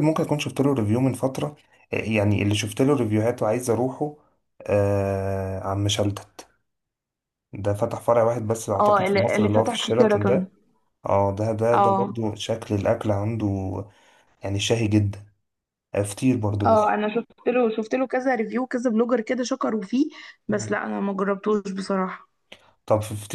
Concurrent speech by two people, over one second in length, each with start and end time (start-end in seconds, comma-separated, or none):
8.8-10.5